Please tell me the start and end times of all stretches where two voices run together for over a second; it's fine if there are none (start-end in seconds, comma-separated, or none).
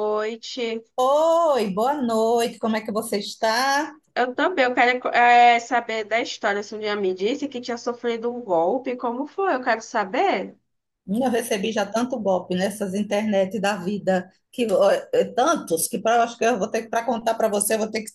none